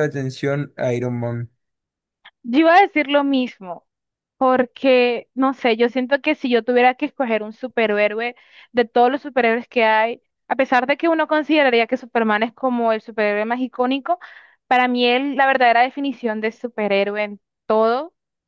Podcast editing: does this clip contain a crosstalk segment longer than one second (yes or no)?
no